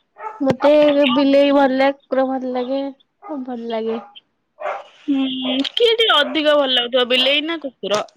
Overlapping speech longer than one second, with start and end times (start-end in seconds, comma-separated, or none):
none